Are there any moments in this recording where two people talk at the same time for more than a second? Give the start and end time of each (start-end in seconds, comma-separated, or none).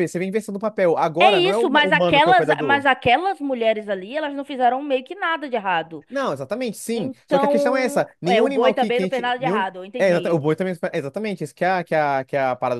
1.2-2.9, 6.9-10.4